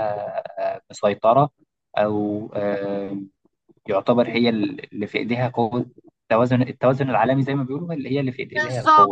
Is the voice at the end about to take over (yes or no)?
yes